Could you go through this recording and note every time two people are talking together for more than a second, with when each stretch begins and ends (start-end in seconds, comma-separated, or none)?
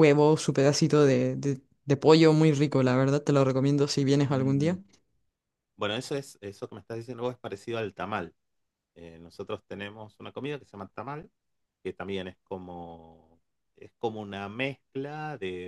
none